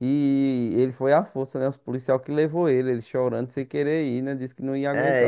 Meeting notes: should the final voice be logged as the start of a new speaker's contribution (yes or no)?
yes